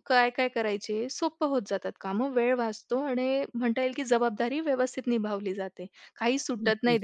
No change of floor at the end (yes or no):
yes